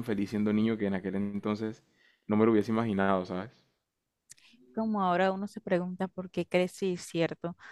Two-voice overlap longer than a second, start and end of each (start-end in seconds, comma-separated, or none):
none